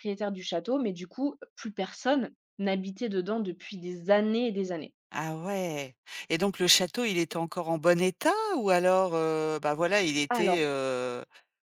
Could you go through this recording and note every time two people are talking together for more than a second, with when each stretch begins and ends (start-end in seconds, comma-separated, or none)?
none